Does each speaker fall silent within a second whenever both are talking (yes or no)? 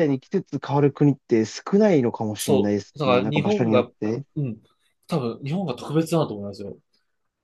no